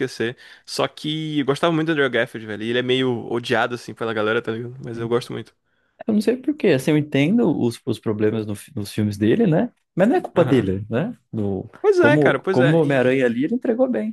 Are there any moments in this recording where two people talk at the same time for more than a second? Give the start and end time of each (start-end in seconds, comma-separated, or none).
11.8-13.3